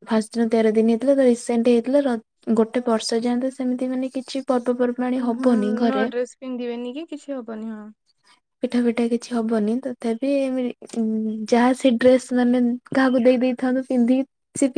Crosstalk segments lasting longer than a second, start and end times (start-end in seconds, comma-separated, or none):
none